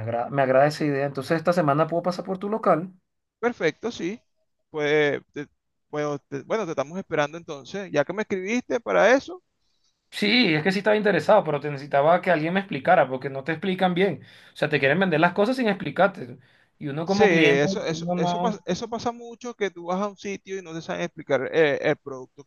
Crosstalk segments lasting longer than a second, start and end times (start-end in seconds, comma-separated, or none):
17.0-18.6